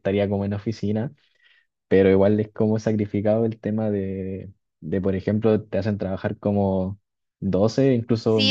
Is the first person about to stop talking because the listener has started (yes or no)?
yes